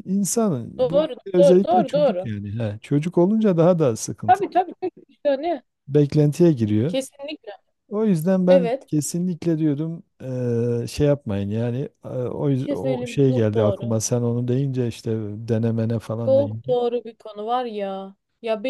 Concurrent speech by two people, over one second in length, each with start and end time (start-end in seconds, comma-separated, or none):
0.8-2.3, 12.6-14.0